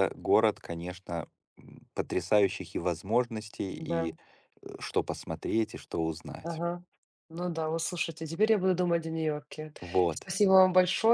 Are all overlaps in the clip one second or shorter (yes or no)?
yes